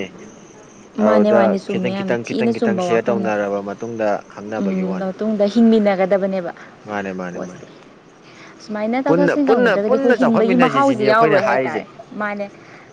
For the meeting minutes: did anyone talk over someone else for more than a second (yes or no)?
yes